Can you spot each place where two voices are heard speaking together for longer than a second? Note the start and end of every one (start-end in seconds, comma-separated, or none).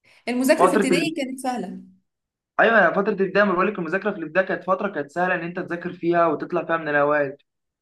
none